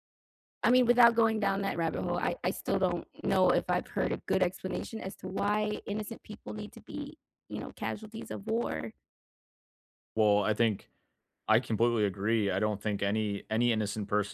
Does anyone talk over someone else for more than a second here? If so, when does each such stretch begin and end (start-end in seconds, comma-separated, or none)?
none